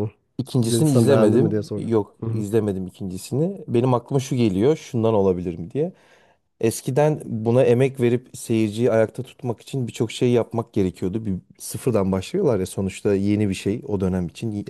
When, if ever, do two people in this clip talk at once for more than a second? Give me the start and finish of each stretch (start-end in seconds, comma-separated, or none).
0.6-2.5